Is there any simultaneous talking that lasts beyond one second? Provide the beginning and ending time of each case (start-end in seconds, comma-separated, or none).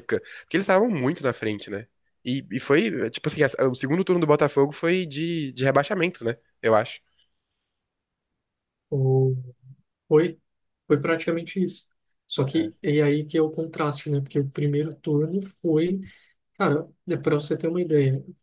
none